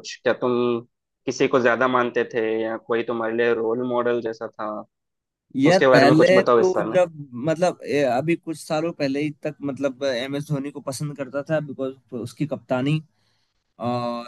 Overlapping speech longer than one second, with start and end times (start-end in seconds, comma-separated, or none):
5.7-7.0